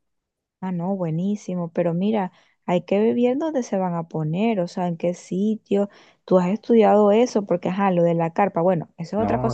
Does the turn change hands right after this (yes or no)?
yes